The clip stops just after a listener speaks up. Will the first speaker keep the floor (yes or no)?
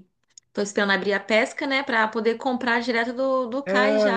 no